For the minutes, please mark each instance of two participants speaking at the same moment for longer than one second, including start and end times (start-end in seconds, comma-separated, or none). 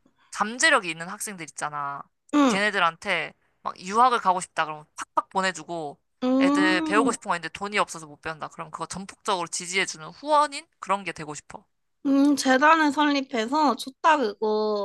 none